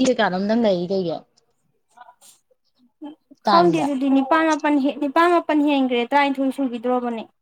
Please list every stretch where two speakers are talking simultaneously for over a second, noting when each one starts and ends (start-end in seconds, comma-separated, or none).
none